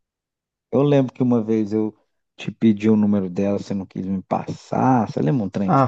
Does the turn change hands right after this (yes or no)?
yes